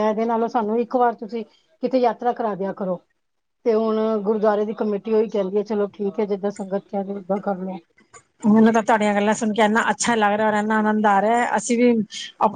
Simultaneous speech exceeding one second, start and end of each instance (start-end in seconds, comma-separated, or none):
none